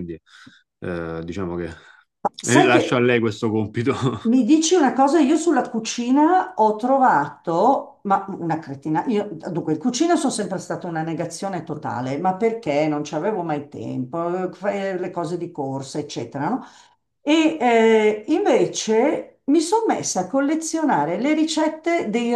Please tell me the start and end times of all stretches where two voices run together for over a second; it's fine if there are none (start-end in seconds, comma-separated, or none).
none